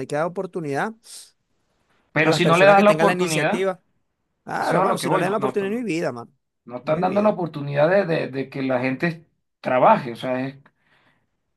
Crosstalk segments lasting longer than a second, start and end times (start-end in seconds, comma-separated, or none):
2.2-3.6, 4.5-5.9